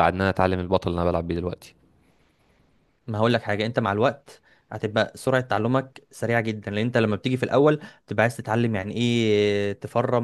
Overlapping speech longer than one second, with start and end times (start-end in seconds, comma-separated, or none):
none